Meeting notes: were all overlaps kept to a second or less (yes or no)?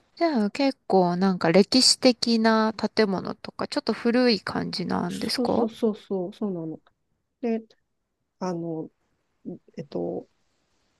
yes